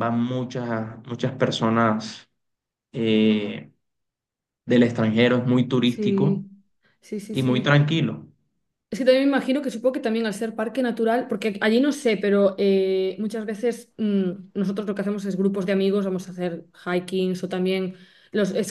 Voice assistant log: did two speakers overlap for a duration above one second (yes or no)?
no